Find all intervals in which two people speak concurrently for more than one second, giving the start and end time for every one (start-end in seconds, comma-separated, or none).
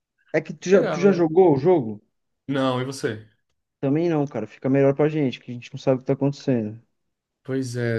none